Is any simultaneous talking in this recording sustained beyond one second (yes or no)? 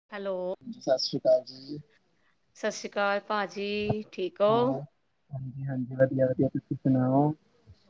no